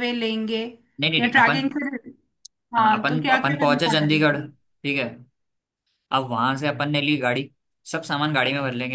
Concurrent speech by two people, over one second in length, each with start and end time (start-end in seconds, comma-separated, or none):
2.8-4.2